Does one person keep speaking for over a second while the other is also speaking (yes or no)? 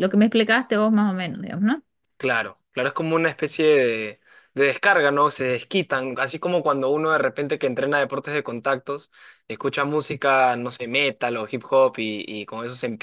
no